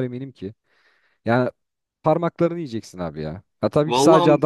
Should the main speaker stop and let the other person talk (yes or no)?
no